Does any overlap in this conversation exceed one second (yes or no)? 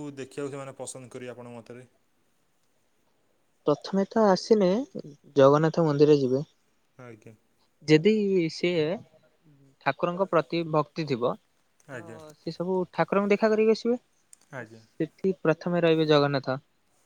no